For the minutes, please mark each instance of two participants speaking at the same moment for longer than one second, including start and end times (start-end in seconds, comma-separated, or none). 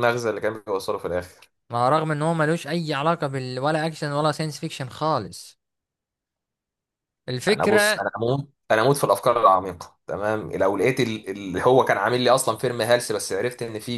none